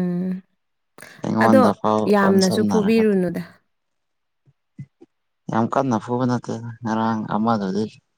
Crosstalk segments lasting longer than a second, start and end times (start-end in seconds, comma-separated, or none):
1.4-3.0